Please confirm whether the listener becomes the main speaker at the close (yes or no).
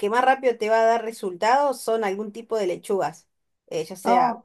no